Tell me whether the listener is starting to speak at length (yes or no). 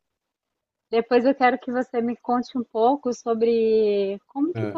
no